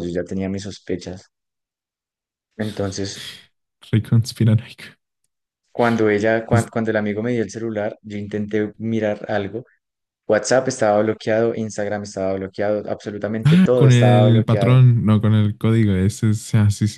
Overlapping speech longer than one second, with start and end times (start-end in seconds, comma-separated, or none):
13.4-14.8